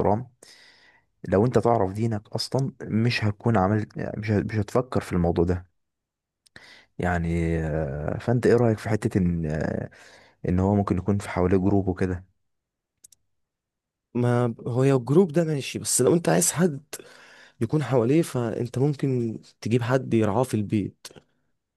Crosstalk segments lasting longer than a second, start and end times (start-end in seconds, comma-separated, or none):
none